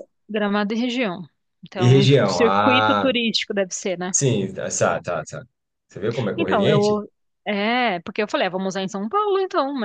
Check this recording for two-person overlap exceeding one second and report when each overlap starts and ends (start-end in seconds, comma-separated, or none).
1.8-3.1